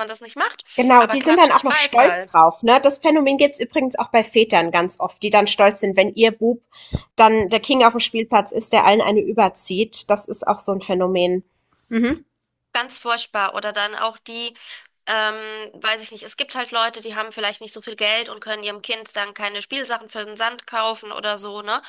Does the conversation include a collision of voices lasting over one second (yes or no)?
yes